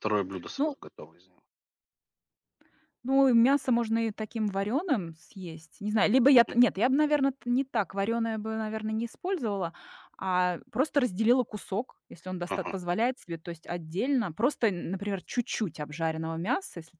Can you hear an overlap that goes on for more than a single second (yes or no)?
no